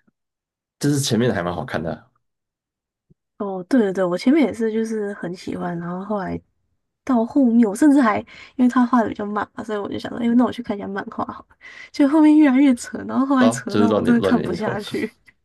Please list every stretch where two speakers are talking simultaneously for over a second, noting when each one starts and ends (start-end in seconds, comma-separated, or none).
13.4-14.8